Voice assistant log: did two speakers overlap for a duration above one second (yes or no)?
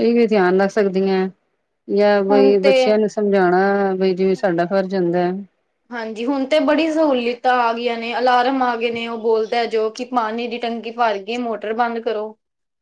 no